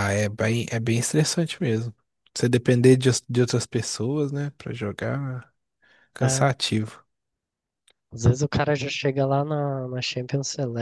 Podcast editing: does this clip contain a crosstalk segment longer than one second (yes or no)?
no